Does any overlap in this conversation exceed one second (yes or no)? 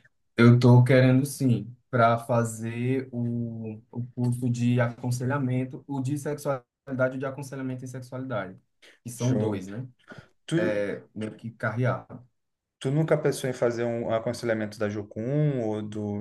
no